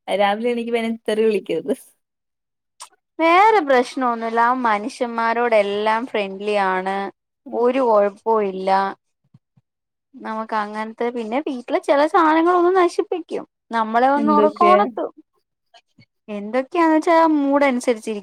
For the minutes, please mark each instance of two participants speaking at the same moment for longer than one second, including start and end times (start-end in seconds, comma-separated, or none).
none